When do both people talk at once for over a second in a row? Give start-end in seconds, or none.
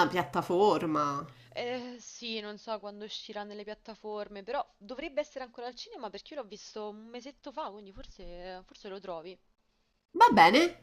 none